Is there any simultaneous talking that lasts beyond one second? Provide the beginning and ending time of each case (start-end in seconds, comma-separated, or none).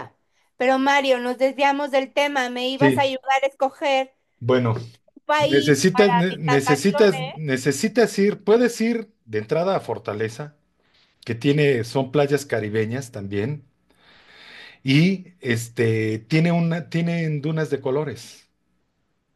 5.5-7.4